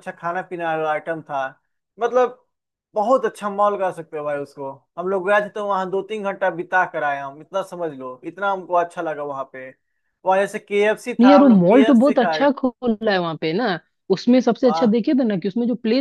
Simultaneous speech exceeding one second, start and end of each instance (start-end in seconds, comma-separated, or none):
11.2-12.5